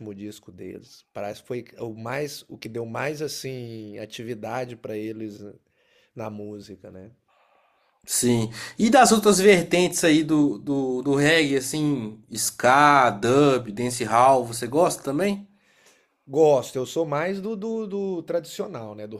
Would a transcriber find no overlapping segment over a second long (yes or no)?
yes